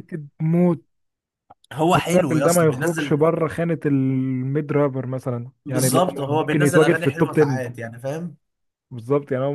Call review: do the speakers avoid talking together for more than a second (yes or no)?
no